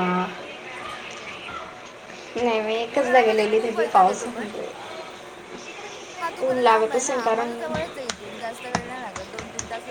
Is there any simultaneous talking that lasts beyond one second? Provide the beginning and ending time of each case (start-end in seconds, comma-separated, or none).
3.0-4.5